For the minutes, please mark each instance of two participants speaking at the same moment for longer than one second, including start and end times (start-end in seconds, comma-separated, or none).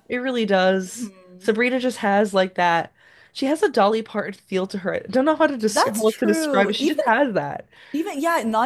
5.7-7.0